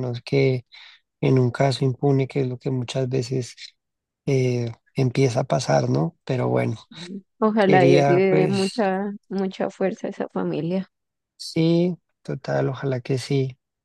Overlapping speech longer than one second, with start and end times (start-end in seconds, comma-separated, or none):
7.7-8.9